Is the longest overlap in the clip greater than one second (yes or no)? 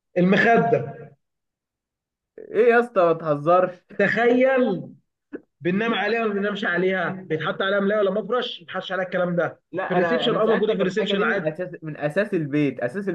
yes